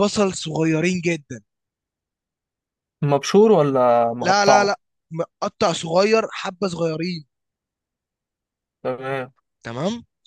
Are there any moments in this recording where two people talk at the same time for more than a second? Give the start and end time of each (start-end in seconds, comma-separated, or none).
none